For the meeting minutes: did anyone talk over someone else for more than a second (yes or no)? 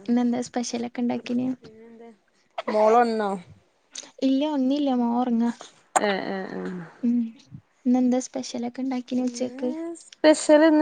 no